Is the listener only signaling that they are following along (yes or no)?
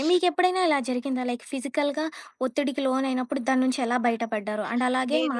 yes